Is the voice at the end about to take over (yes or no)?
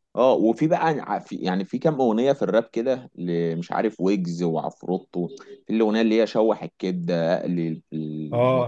yes